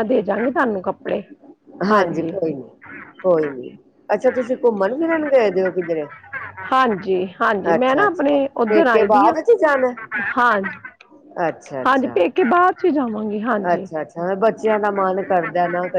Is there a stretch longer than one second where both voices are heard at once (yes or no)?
yes